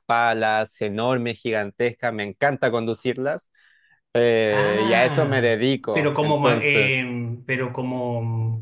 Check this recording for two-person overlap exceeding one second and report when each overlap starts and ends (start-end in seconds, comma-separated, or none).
4.5-7.1